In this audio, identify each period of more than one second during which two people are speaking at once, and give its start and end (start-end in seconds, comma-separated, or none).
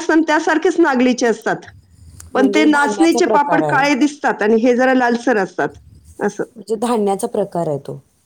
2.4-3.8